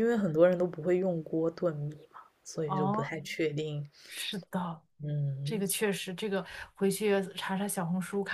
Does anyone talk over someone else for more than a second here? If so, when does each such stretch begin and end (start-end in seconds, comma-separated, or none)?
none